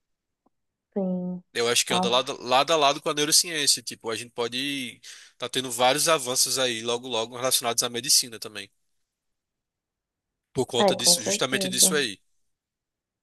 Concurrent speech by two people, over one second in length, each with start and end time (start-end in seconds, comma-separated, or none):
10.8-12.1